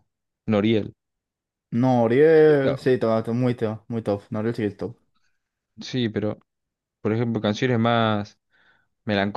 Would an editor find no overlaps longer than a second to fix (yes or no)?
yes